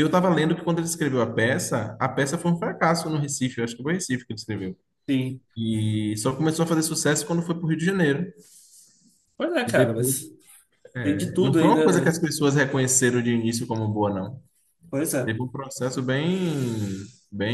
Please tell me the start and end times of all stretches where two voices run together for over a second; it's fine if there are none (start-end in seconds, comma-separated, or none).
11.0-12.2